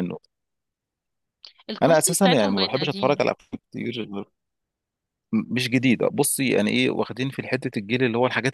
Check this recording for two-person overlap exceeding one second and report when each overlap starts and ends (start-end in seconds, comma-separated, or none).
1.8-3.2